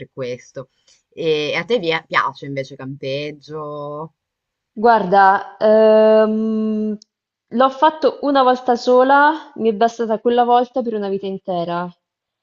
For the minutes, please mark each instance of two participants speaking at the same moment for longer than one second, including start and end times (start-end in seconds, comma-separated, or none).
none